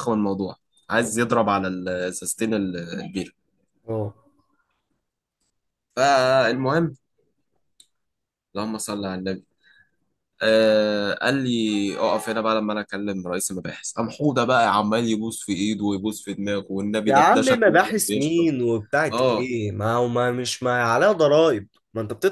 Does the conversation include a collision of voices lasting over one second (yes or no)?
yes